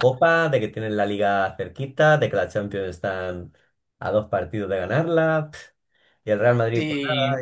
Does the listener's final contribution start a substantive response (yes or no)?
no